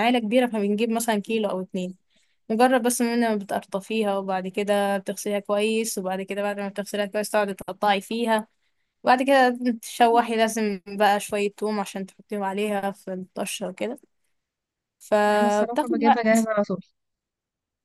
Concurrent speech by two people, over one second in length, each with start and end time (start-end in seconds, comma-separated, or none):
15.2-16.5